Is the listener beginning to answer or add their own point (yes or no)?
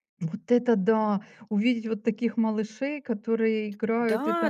yes